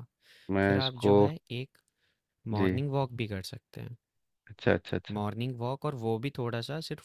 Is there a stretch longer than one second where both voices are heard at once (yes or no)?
no